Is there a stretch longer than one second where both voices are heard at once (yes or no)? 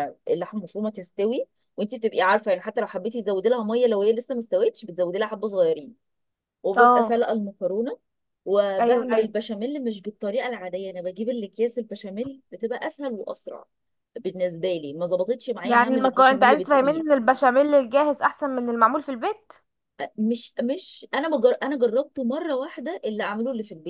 yes